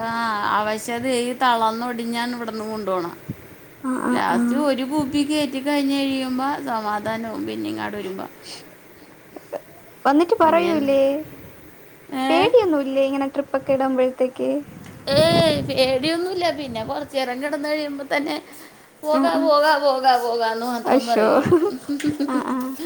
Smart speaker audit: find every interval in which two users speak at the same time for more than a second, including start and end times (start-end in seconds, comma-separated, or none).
none